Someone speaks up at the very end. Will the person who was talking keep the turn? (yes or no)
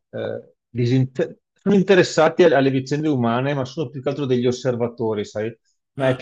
yes